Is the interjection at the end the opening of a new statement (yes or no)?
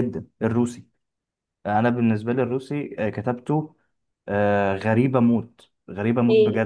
yes